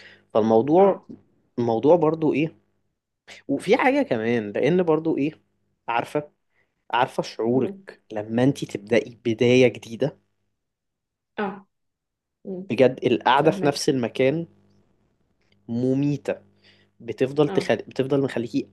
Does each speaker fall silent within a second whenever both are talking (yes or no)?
yes